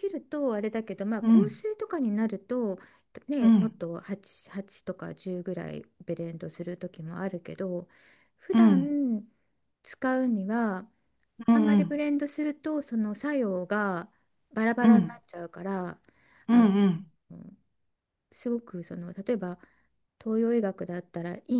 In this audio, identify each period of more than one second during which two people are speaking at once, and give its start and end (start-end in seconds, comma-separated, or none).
none